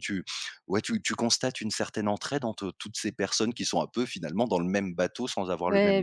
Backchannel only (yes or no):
no